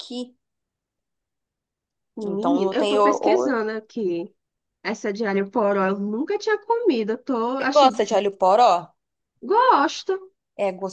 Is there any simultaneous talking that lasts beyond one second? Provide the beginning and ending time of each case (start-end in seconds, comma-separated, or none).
2.2-3.6